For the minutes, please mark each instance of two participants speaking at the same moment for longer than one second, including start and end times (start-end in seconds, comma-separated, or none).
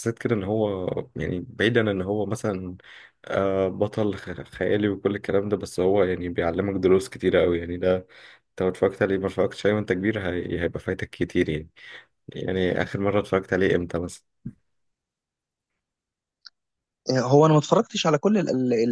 none